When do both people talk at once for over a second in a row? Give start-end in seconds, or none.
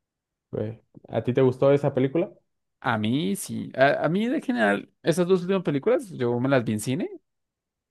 none